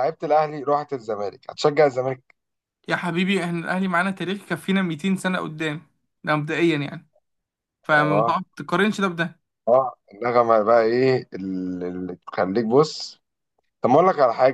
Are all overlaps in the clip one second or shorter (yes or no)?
yes